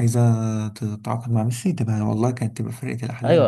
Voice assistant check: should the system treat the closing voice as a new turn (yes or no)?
yes